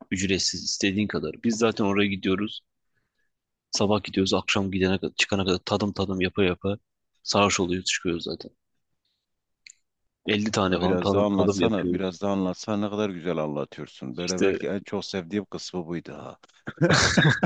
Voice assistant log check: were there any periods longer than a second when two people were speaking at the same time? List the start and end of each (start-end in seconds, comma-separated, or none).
10.7-12.1